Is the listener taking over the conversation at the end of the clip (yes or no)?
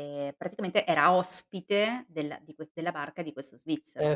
yes